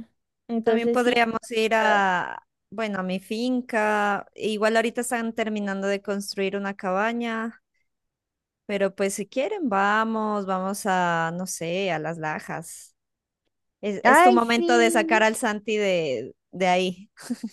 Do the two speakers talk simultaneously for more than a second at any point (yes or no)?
yes